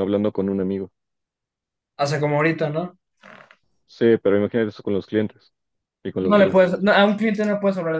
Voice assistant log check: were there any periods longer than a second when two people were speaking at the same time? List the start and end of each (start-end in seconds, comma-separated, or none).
none